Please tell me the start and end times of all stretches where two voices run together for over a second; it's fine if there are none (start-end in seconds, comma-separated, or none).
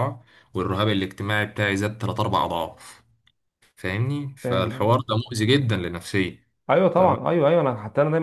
none